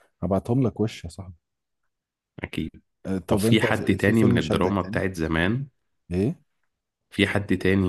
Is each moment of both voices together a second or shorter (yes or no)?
no